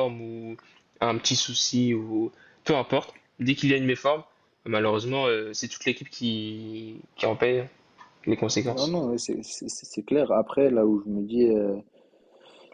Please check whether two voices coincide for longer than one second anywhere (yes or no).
no